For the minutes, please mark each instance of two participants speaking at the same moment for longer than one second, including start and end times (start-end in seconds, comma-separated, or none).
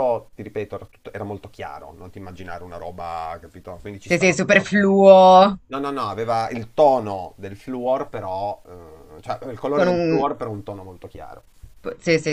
4.0-5.6